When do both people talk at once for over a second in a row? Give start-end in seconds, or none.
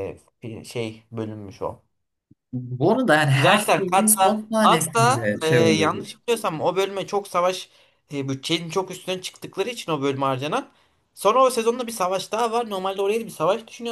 3.3-6.1